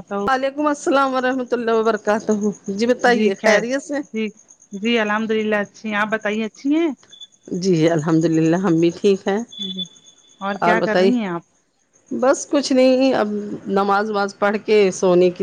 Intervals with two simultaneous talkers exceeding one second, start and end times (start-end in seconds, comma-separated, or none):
none